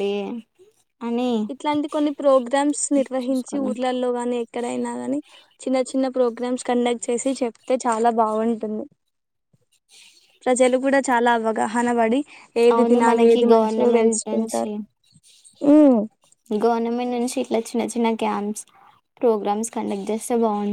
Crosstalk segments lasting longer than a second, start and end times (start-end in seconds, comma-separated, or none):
12.7-14.7